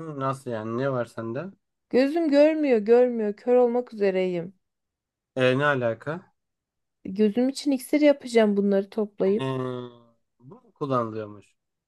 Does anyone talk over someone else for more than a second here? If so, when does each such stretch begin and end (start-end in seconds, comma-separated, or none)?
none